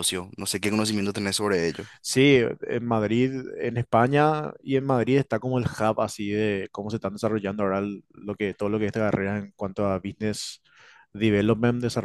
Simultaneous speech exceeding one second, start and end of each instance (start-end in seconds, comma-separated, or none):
none